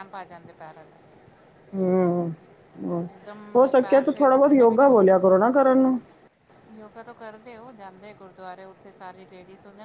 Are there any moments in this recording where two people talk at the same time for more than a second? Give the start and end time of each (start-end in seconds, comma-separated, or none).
3.6-5.2